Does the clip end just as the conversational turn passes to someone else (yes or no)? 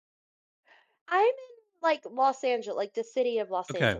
yes